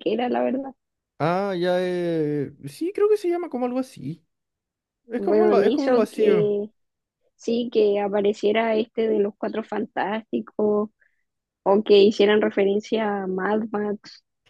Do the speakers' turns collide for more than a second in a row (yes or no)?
yes